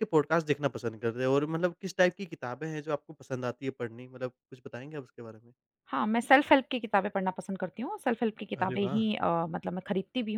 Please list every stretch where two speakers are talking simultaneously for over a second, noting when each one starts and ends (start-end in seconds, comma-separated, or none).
none